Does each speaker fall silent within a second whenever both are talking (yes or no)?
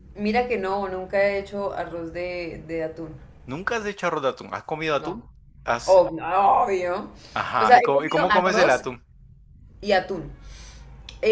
no